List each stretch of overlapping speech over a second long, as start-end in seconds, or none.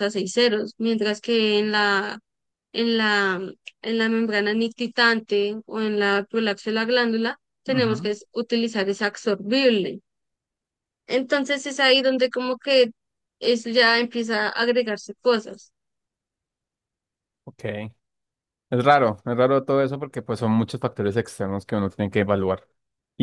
none